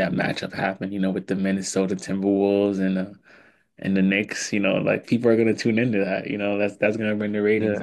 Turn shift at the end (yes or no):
yes